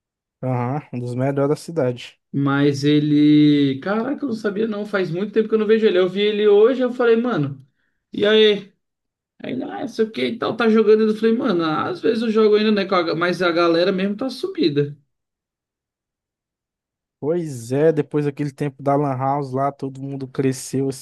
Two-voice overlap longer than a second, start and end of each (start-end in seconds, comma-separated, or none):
none